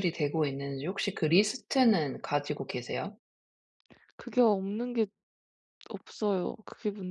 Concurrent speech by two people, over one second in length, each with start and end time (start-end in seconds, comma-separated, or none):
none